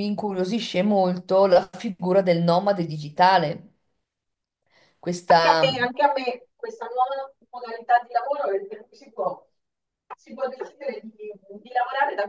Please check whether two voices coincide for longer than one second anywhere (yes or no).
no